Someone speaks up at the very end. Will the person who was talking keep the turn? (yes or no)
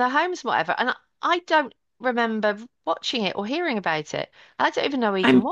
no